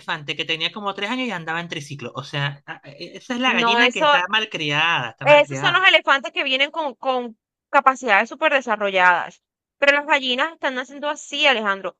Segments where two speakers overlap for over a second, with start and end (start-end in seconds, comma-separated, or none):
none